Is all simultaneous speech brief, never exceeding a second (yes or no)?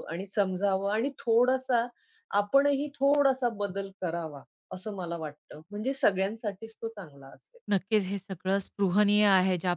yes